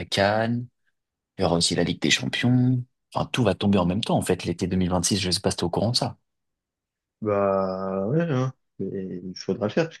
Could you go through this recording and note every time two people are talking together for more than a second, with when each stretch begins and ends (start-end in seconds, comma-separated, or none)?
none